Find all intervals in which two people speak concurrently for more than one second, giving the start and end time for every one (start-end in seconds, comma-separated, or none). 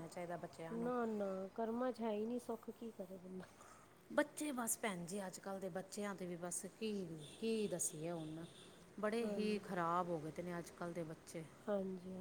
none